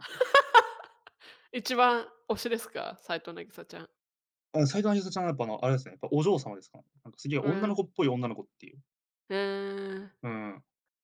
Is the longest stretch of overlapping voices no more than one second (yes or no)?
yes